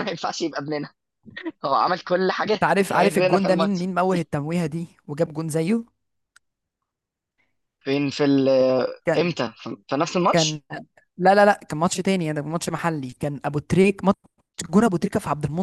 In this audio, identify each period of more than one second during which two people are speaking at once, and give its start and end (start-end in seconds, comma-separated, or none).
2.5-3.9